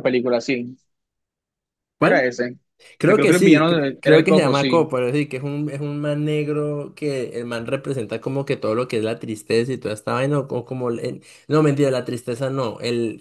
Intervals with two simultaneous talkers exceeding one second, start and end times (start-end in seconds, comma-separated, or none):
3.1-4.9